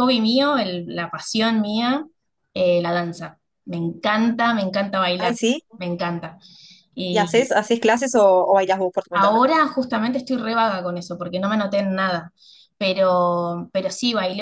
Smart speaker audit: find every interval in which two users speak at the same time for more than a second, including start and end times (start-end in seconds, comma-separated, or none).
none